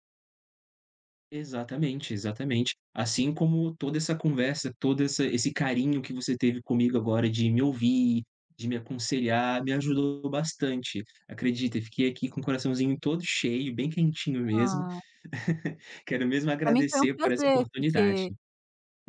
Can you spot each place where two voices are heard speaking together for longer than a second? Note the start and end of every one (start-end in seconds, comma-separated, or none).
16.6-18.2